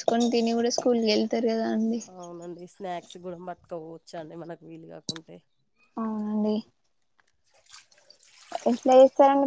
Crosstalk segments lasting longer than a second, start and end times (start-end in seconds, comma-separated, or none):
none